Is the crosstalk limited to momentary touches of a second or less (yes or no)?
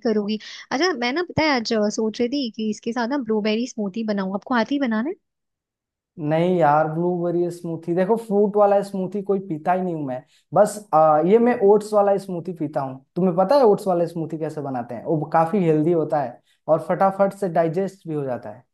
yes